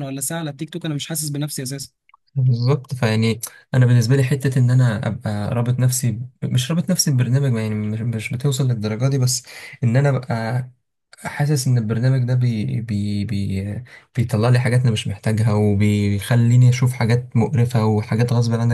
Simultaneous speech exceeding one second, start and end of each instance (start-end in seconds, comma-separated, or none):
none